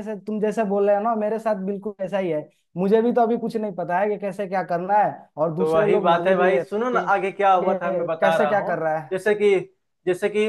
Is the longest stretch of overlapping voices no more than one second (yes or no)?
no